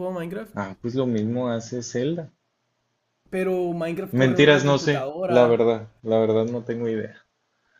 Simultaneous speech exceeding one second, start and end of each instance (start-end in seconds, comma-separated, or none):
4.1-5.7